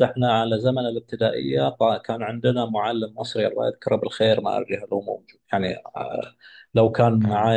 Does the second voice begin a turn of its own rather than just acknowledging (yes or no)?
no